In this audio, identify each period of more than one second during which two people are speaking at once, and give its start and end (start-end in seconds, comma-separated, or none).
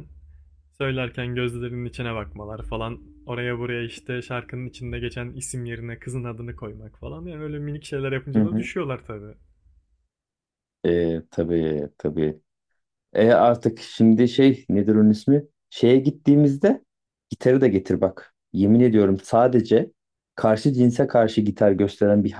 none